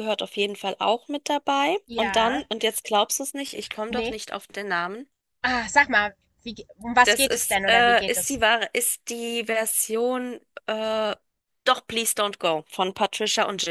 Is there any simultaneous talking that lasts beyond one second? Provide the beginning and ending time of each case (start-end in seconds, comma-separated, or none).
7.0-8.4